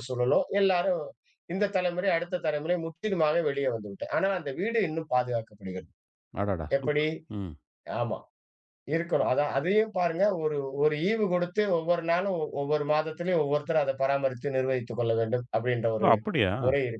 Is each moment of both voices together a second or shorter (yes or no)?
yes